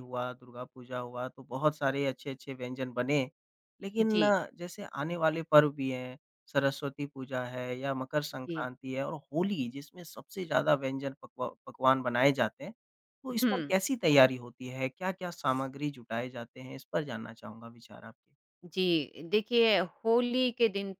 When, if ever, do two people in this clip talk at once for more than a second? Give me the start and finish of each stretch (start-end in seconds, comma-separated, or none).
none